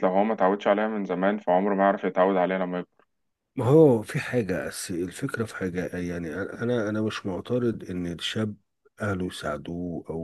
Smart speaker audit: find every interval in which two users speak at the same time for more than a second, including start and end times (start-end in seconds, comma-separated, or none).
none